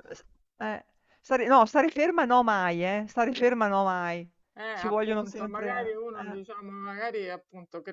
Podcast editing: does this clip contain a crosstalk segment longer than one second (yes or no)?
yes